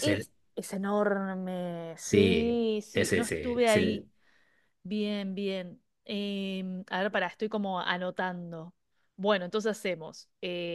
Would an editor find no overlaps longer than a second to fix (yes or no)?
no